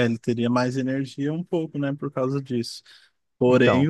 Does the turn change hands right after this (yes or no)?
no